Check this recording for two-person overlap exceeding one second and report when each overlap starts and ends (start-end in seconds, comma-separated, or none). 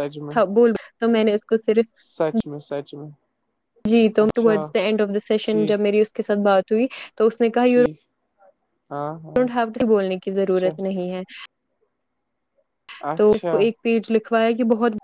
none